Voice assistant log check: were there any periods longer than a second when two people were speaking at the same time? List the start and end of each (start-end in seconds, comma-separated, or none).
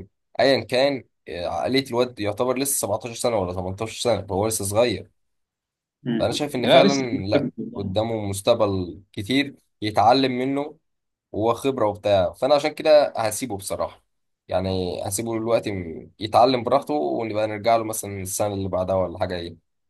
6.2-8.0